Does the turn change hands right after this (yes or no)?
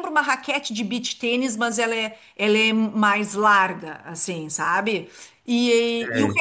no